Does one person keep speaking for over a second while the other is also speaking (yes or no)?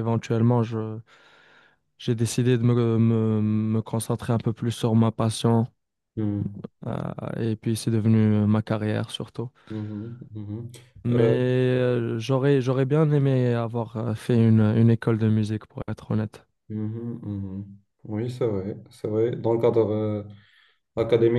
no